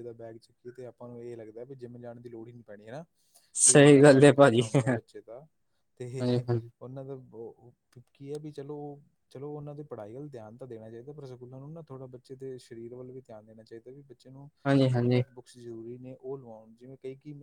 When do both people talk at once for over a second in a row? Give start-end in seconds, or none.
3.7-5.1